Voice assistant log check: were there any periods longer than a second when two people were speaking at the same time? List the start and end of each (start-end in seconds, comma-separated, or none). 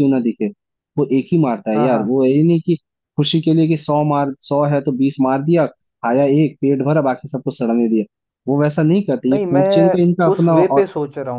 none